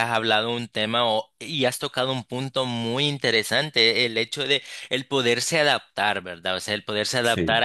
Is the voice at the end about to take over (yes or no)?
no